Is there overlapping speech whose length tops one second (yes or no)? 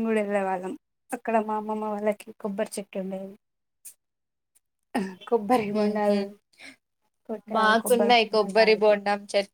yes